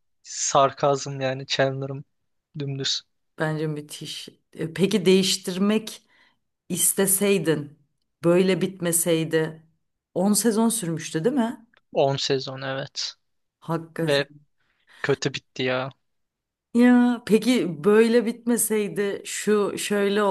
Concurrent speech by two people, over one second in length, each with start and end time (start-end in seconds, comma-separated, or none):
none